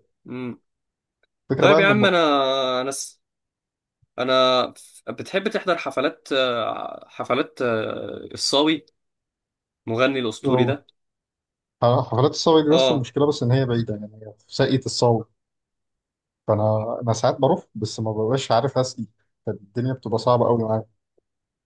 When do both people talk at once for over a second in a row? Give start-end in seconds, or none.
none